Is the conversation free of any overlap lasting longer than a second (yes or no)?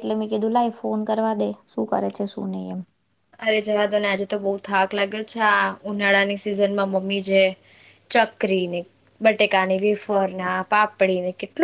yes